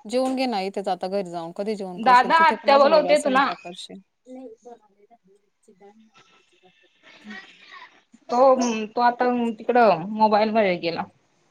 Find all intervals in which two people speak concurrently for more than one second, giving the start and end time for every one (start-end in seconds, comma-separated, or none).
2.0-3.5